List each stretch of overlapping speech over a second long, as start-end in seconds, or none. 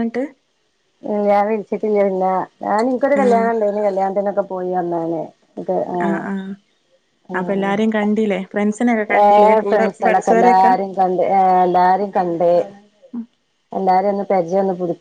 9.2-10.7